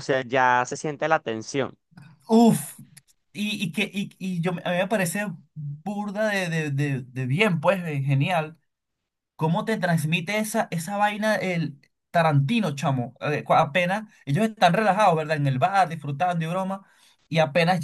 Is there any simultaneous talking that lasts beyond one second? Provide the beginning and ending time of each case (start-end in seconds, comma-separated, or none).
none